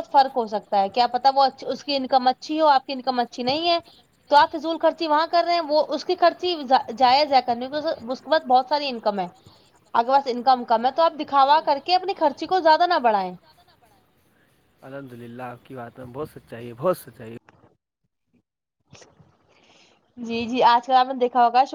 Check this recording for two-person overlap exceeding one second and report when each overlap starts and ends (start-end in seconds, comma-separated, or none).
none